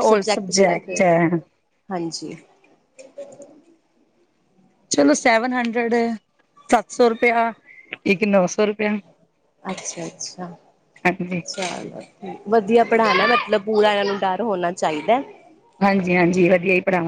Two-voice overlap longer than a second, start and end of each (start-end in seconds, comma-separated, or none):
none